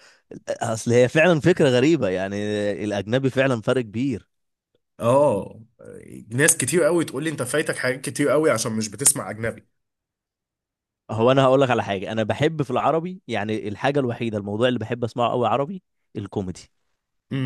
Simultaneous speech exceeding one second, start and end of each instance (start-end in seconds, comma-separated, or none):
none